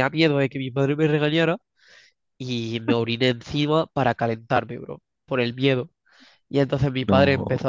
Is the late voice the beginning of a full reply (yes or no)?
no